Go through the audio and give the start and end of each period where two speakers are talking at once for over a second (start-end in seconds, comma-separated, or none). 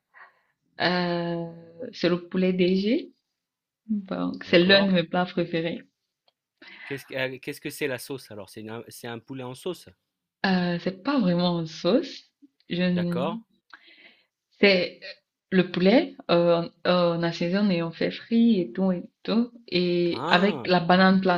none